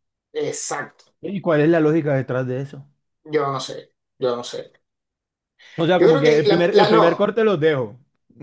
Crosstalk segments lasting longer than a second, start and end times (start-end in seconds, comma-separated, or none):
6.0-7.3